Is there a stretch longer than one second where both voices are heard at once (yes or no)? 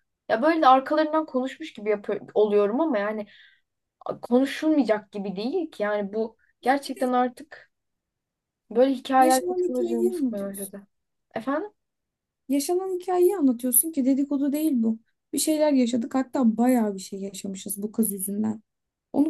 yes